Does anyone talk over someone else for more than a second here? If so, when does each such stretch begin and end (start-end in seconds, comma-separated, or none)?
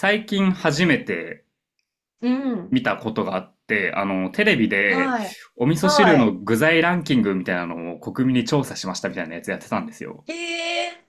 none